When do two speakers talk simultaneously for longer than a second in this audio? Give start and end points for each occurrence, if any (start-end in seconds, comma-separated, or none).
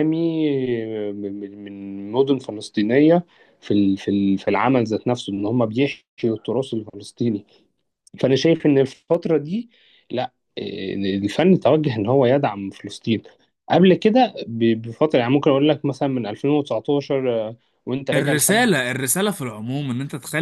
none